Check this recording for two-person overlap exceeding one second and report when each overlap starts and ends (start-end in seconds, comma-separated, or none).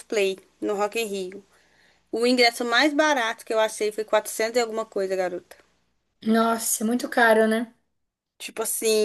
none